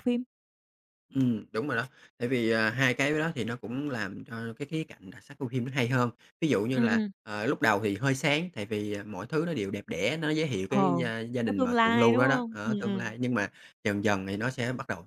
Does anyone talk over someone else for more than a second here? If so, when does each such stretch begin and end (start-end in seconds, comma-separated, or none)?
11.4-13.1